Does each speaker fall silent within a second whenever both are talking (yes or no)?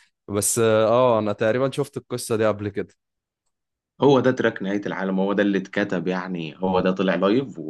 yes